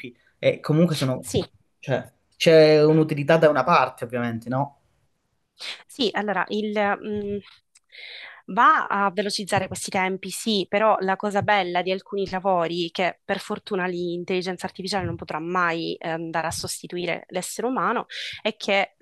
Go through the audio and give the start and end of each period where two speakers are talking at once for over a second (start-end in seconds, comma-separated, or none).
none